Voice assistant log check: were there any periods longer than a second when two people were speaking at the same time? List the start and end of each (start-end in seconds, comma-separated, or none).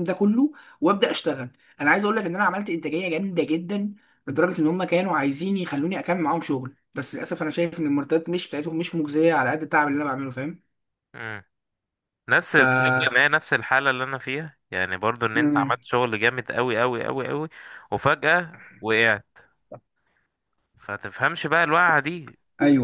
none